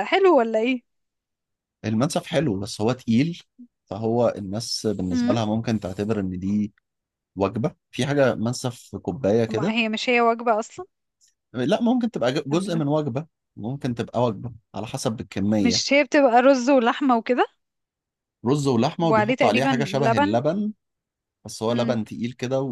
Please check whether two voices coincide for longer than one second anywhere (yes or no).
yes